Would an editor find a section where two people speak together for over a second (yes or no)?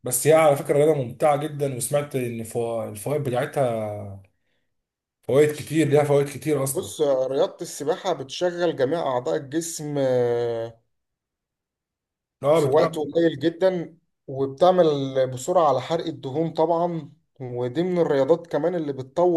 no